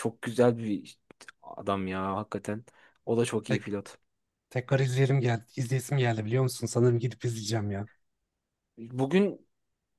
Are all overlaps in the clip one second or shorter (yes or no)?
yes